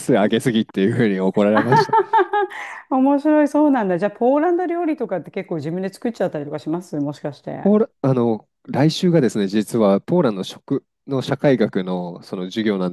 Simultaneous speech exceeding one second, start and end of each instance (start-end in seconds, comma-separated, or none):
none